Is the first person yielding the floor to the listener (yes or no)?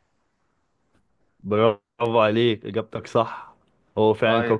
no